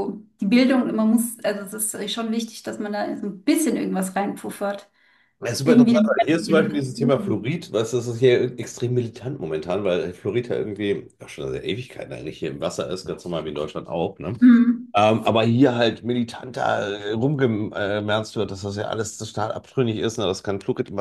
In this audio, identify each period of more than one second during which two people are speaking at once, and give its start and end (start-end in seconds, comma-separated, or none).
5.6-7.5